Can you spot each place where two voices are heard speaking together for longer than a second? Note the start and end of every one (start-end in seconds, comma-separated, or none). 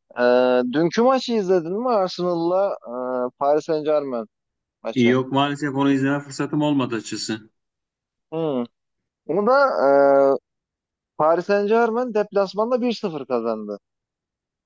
none